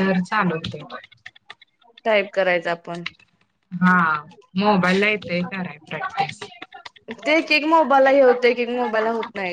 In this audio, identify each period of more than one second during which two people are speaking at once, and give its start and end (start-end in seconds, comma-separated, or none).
none